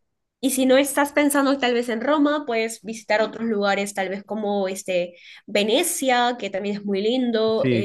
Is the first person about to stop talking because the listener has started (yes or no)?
yes